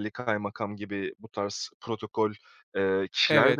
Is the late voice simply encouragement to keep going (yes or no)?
no